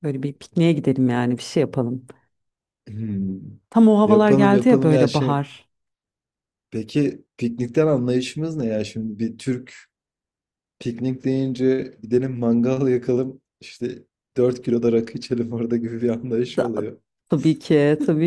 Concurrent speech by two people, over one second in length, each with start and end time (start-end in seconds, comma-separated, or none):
4.0-5.4